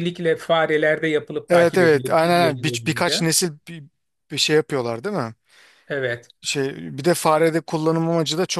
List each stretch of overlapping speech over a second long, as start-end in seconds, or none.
1.5-3.2